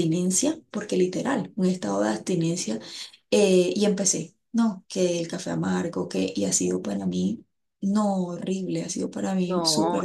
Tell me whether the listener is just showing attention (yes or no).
no